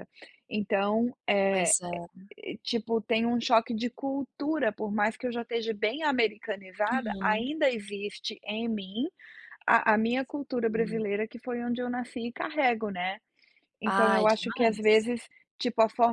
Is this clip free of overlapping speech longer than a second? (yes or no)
no